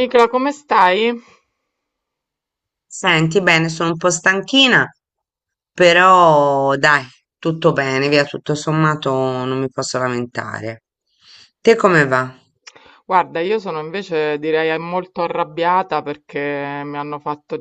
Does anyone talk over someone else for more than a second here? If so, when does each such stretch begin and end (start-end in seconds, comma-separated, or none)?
none